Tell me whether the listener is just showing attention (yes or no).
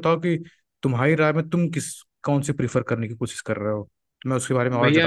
no